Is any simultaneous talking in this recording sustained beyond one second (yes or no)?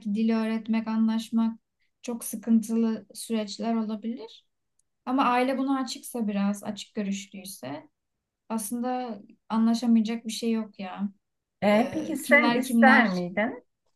yes